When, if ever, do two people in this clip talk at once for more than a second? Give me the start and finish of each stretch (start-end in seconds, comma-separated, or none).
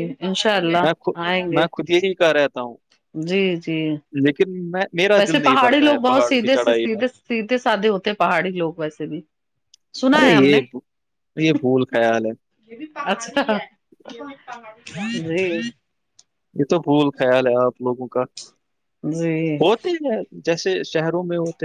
5.2-7.0